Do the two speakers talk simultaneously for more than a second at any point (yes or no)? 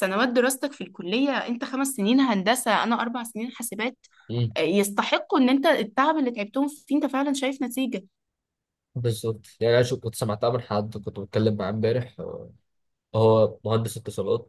no